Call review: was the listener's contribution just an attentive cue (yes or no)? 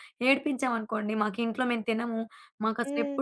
yes